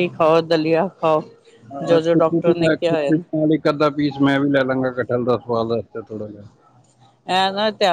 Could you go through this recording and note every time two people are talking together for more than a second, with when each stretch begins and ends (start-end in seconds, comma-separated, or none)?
1.9-3.2